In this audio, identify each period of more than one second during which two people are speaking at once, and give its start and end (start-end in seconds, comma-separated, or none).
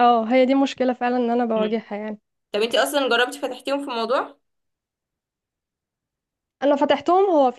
none